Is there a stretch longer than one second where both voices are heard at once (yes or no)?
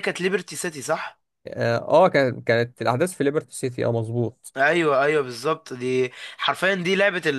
no